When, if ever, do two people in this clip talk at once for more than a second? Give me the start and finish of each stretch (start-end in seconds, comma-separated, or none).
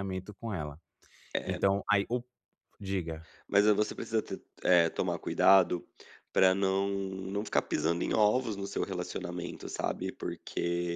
none